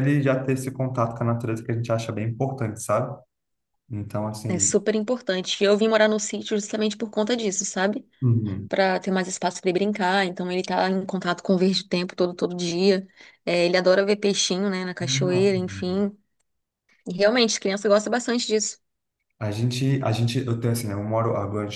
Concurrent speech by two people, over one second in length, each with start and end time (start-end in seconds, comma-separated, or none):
none